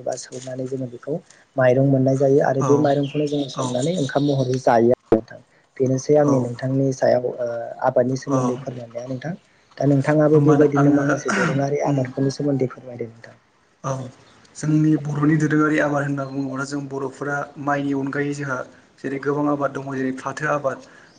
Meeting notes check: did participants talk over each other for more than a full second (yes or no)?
yes